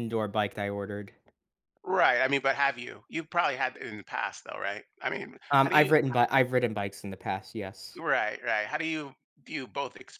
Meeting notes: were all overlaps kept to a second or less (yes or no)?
yes